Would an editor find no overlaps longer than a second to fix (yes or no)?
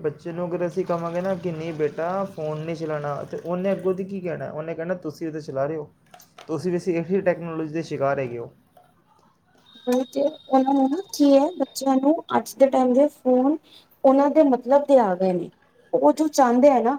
yes